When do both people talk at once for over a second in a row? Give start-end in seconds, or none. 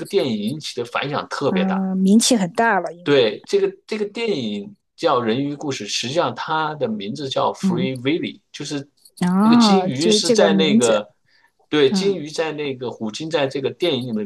9.4-11.0